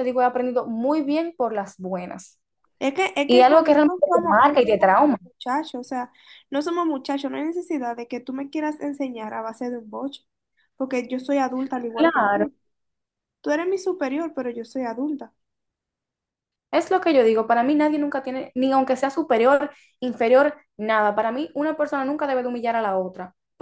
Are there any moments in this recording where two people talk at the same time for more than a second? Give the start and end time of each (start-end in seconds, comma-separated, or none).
3.3-4.9